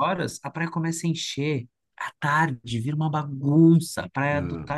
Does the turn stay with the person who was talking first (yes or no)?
yes